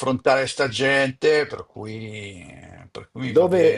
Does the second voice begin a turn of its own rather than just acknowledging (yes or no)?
yes